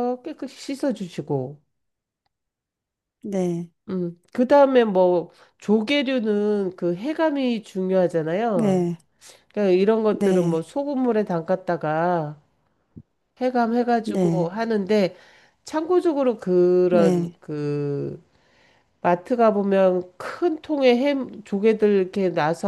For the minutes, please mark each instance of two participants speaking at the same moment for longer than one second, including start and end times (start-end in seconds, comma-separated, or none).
none